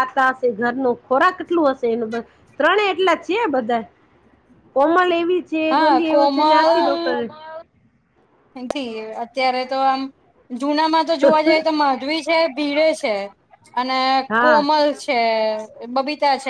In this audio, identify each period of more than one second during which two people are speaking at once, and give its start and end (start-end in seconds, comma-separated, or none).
5.7-7.1